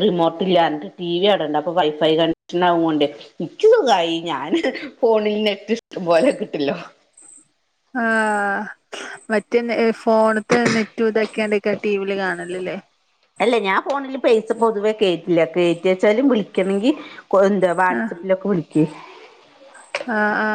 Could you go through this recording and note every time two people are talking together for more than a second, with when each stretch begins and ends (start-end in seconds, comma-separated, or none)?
none